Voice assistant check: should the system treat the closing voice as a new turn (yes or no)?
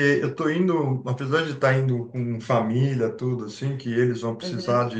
no